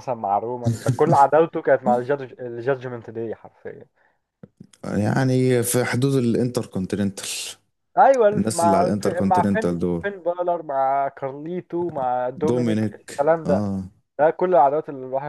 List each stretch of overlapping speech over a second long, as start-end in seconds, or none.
8.3-10.0, 12.4-13.6